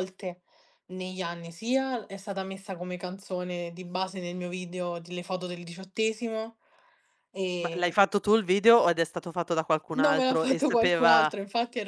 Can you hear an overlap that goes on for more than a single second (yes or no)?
yes